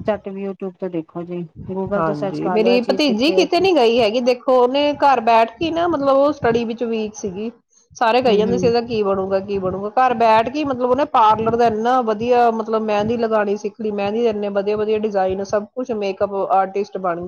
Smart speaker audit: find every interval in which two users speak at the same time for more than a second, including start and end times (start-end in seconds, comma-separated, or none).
2.0-3.6